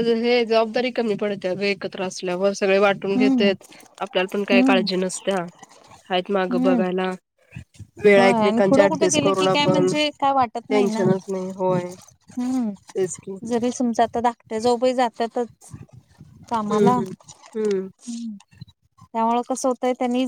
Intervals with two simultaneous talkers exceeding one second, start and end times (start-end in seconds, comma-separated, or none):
8.2-9.9